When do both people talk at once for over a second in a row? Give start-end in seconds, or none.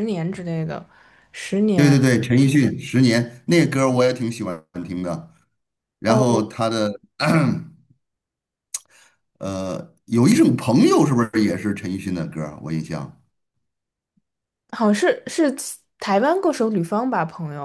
none